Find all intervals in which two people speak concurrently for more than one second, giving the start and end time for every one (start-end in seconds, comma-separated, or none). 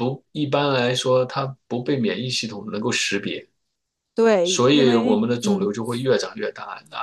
4.4-5.7